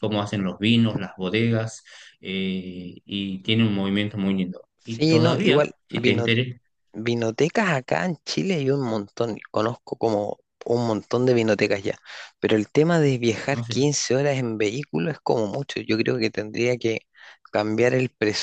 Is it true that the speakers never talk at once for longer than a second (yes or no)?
no